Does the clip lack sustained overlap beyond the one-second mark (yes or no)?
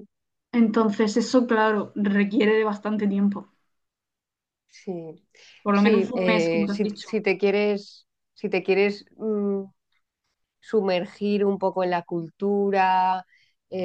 no